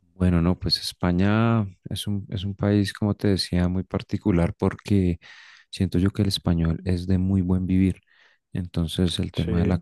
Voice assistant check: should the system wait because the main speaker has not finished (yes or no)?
yes